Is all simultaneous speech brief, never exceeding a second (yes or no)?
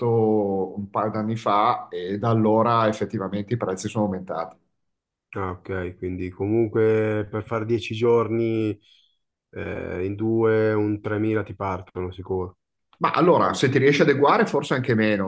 yes